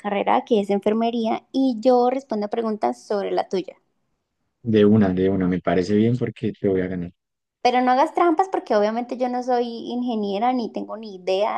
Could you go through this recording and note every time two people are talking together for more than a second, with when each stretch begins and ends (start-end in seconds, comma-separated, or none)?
none